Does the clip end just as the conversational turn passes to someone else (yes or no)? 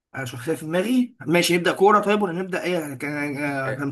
yes